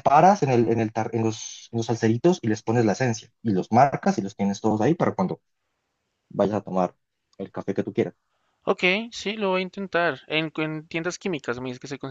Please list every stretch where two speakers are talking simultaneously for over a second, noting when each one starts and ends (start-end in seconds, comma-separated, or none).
none